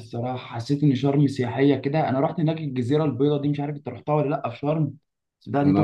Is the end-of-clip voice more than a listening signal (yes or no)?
yes